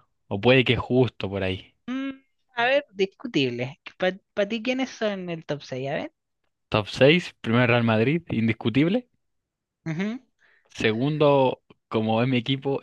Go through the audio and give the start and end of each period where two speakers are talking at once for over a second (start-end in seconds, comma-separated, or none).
none